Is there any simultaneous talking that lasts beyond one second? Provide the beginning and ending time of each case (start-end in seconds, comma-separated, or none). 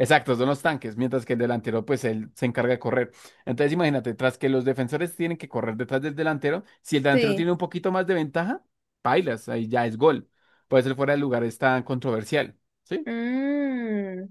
none